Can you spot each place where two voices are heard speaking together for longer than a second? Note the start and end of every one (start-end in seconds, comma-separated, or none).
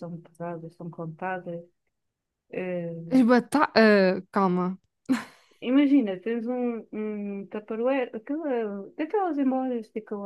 none